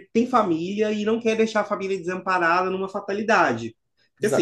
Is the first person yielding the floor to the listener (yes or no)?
yes